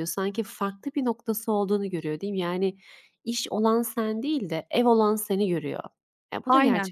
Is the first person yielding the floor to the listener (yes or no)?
yes